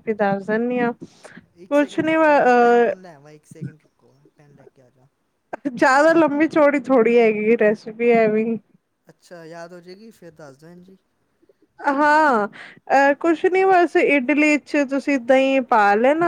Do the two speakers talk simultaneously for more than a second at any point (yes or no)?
yes